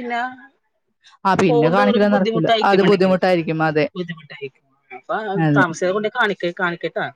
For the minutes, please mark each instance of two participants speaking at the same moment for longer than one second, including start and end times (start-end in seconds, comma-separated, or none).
1.5-3.1